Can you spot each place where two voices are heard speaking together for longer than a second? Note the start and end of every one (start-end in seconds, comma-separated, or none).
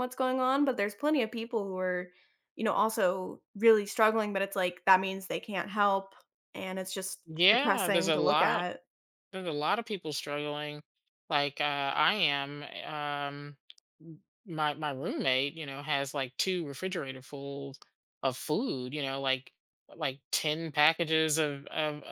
7.2-8.7